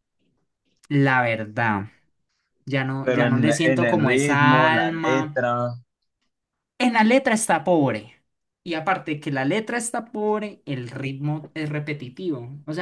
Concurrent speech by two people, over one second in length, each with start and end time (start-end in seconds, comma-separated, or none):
3.0-5.4